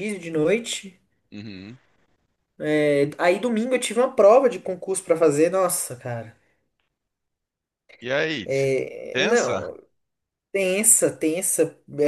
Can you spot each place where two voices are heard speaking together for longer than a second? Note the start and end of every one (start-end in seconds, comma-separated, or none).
none